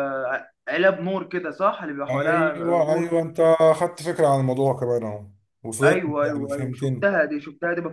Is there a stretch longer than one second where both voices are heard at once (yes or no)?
yes